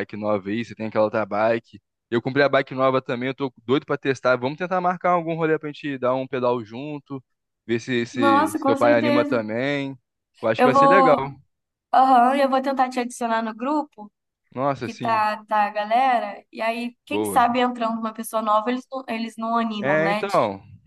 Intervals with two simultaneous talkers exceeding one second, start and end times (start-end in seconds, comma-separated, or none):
8.1-9.4